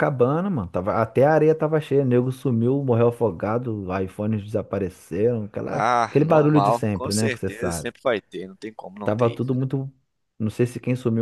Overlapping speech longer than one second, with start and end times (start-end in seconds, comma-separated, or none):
5.7-7.9